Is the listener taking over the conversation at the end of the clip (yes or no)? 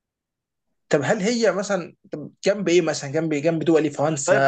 yes